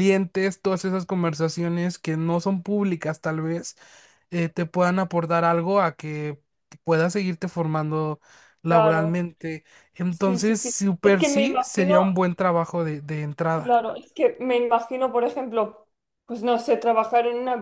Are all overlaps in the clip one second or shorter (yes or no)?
no